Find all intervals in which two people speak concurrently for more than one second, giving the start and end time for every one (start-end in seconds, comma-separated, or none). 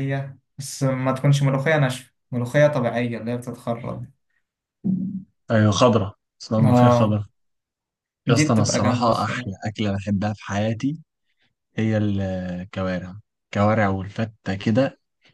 8.3-9.5